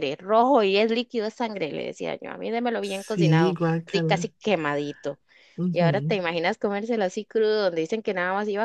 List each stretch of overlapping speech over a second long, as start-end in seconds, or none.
2.8-4.3